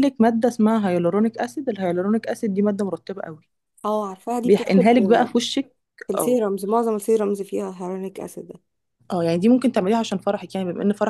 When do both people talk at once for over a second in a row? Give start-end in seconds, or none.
none